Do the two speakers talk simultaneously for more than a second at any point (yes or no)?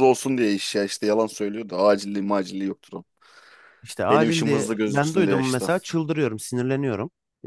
yes